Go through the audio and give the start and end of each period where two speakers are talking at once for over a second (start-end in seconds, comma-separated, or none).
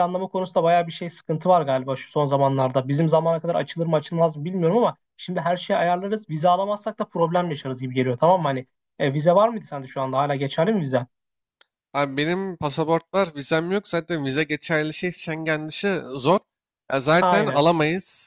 none